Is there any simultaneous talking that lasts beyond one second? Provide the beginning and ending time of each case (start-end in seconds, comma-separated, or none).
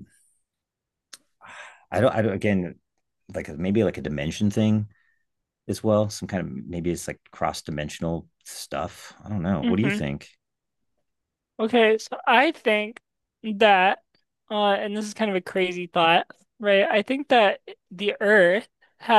none